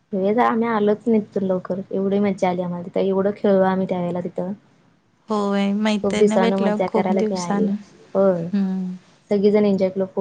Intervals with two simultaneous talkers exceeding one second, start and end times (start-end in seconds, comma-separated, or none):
6.0-7.7